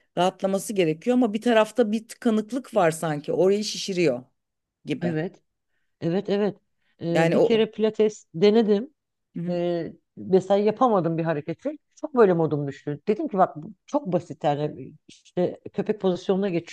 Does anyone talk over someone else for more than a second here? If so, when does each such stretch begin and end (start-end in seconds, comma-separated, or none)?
none